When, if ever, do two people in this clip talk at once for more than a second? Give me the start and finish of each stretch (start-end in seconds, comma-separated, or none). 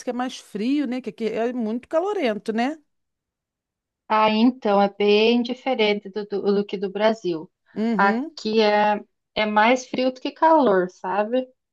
none